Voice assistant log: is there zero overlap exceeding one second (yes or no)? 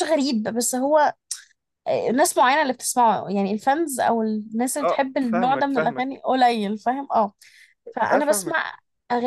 no